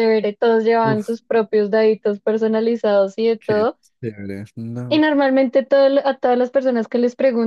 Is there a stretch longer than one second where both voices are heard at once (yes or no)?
no